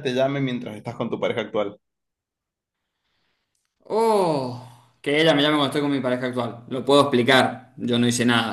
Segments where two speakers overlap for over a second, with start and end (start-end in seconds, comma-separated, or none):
none